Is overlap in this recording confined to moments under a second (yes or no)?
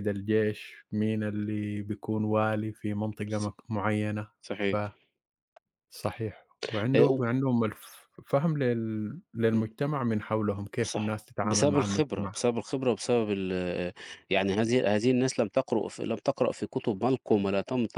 no